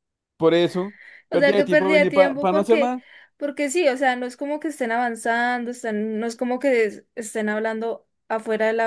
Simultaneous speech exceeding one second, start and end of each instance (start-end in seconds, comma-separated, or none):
1.3-2.9